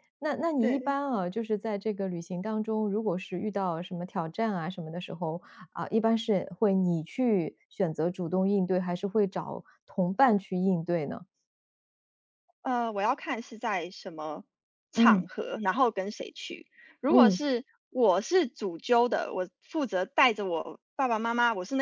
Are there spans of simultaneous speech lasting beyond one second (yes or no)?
no